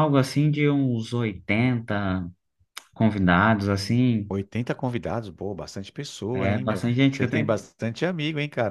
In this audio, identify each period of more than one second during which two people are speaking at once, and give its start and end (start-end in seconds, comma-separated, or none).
6.3-7.7